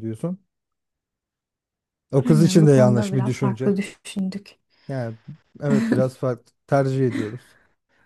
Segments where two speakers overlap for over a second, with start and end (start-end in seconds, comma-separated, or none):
2.2-3.7